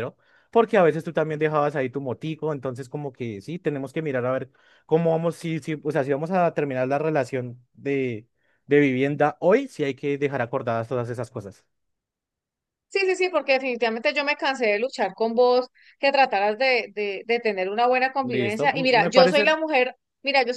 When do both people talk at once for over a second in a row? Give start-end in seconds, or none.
18.2-19.5